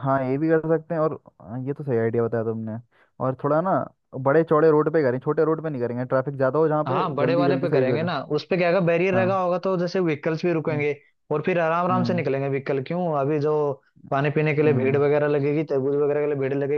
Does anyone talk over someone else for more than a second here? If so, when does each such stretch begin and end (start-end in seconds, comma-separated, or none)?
6.9-8.1